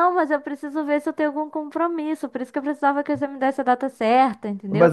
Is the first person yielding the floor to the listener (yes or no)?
yes